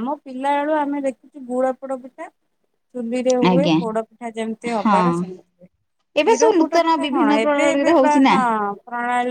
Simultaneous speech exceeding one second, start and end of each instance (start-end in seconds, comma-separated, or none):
6.2-8.3